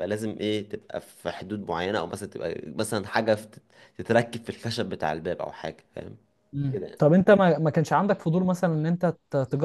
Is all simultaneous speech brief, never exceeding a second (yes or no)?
yes